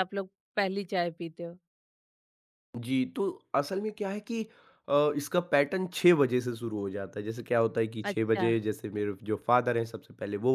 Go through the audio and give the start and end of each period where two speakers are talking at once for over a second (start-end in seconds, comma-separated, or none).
none